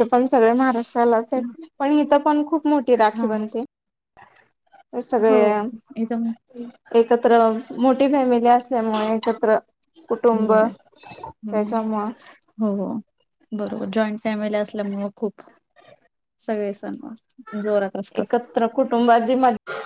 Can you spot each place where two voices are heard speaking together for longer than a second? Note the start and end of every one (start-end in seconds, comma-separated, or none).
none